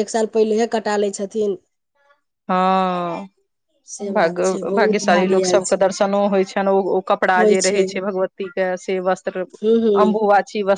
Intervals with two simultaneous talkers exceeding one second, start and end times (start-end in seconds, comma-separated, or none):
4.1-5.9